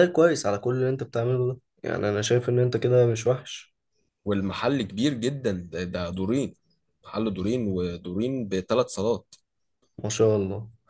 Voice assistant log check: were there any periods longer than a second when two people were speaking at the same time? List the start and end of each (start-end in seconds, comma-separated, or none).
none